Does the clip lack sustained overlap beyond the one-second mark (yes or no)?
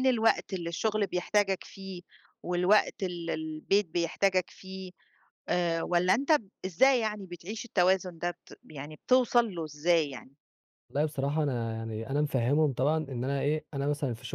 yes